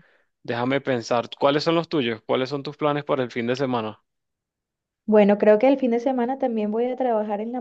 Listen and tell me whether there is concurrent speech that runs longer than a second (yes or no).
no